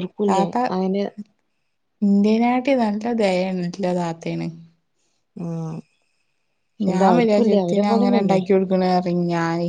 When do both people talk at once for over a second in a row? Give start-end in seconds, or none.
6.9-8.4